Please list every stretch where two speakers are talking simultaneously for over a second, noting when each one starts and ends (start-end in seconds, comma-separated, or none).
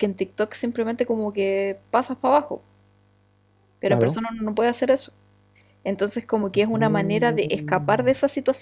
6.7-8.1